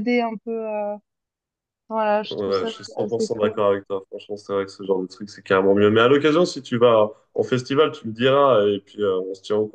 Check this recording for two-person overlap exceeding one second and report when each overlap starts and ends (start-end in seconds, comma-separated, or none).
2.3-3.5